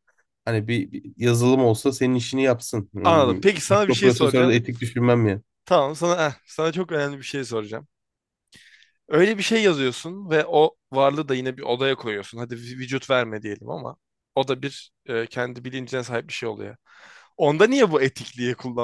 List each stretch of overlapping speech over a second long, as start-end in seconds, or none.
3.0-4.5